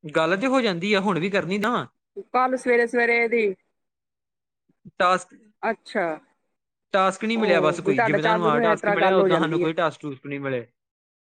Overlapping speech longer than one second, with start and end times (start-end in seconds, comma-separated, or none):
7.3-9.7